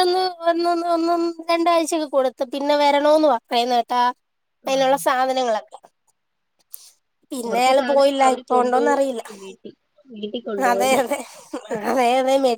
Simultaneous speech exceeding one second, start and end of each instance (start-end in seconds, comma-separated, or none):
7.5-9.2